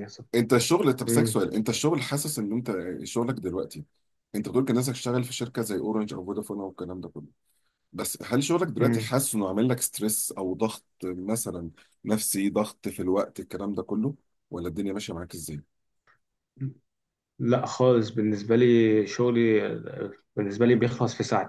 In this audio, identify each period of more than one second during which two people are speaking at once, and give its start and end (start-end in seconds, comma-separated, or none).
none